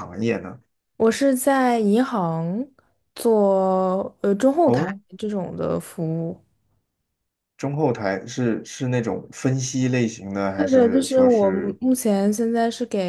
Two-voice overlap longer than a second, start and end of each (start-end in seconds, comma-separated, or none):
10.6-11.8